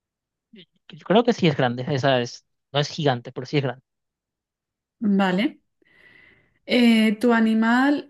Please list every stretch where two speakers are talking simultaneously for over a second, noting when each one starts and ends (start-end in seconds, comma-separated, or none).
none